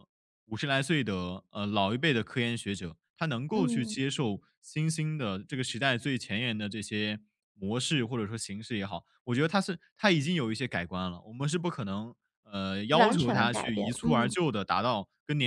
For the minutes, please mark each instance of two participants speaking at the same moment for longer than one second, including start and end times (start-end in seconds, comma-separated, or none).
13.0-14.3